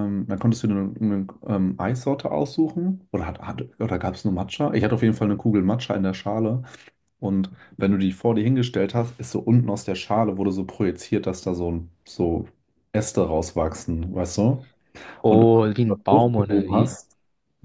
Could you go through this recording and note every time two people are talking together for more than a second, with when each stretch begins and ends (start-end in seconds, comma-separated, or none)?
15.3-16.9